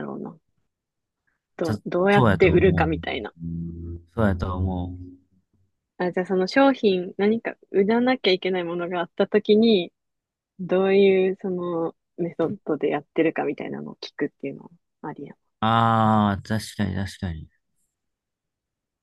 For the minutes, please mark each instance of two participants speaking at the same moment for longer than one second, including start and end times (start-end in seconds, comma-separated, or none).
1.6-3.2